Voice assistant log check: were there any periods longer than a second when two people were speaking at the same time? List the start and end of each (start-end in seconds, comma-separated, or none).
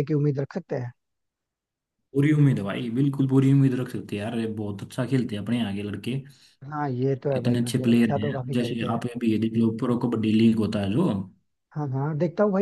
7.4-9.0